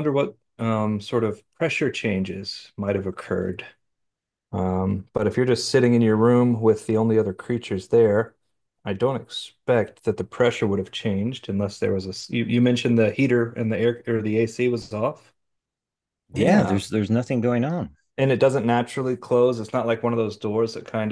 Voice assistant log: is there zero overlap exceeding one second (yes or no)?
yes